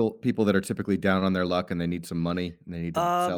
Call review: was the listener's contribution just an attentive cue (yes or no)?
no